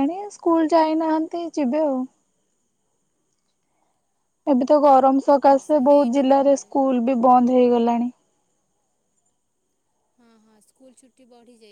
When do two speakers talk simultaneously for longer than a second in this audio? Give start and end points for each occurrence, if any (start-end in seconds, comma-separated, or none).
4.5-6.7